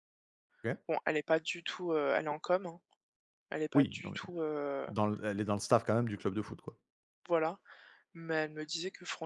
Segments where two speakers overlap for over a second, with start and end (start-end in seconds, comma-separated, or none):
none